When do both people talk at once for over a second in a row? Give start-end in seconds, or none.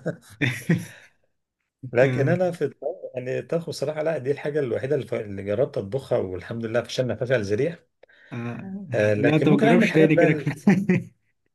8.9-10.5